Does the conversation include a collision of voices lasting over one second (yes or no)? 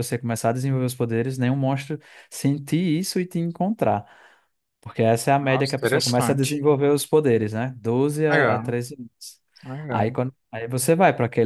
yes